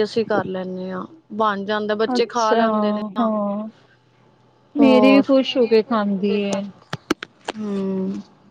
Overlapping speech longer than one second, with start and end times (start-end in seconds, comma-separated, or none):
none